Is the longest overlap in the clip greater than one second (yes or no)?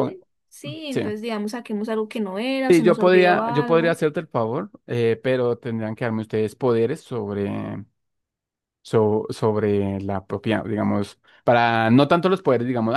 yes